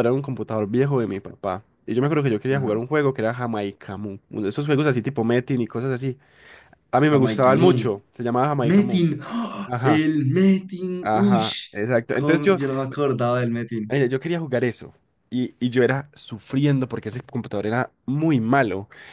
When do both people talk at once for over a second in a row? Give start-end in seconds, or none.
none